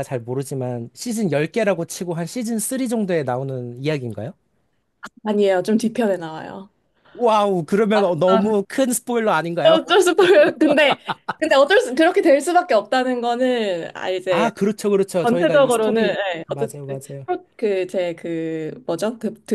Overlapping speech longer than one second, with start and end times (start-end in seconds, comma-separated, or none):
15.2-16.8